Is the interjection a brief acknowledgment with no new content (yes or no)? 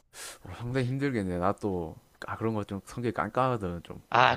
no